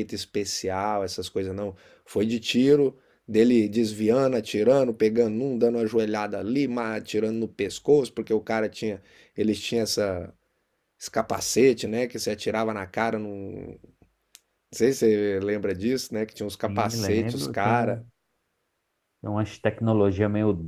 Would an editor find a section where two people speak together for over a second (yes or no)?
yes